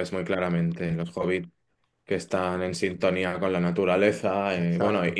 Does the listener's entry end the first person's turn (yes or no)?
no